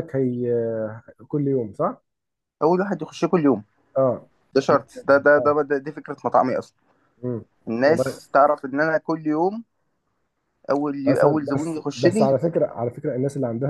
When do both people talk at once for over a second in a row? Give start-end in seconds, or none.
11.1-12.3